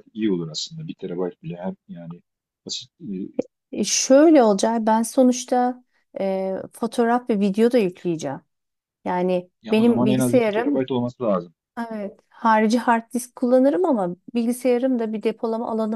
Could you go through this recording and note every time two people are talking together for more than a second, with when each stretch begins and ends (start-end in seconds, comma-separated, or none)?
9.6-10.9